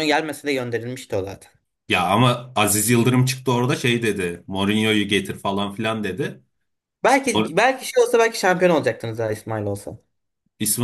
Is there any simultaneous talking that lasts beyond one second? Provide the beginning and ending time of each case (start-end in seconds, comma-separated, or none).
none